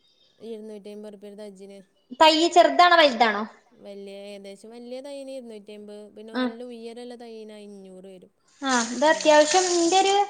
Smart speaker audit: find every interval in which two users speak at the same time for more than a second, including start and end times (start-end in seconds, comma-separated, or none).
none